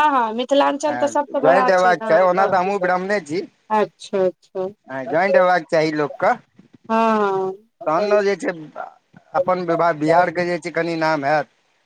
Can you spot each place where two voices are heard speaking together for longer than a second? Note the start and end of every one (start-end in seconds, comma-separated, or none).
0.9-2.7